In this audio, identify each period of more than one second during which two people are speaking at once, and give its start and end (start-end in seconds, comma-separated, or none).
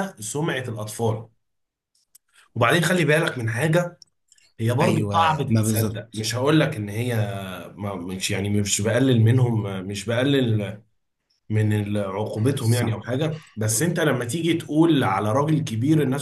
4.8-6.2